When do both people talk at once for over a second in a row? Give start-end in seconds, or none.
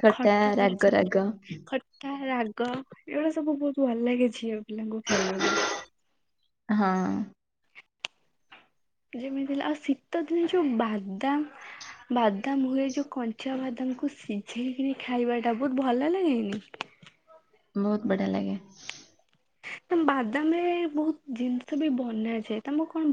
none